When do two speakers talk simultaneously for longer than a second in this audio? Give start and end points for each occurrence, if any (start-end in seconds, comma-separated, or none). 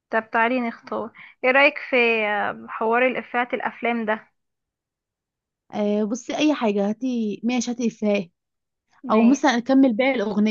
none